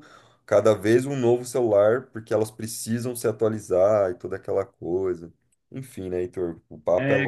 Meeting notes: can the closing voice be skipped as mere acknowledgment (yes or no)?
no